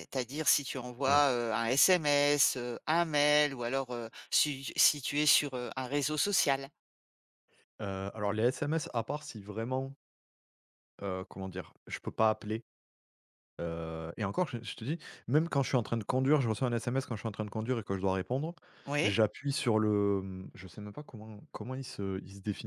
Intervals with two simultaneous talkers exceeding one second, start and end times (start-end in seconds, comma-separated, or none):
none